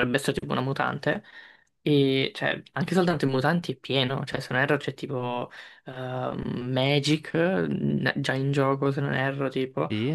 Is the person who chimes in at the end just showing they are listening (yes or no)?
yes